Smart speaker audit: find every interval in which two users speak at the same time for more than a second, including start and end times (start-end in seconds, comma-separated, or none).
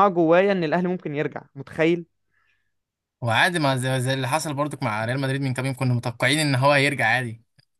none